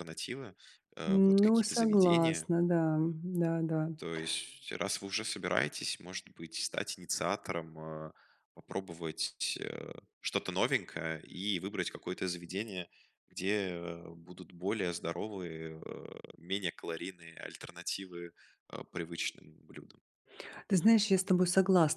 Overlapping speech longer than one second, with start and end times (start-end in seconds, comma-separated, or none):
1.1-2.5